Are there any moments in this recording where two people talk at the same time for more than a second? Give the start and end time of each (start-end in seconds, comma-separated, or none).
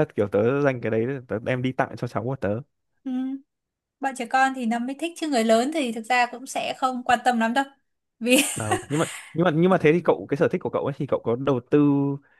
none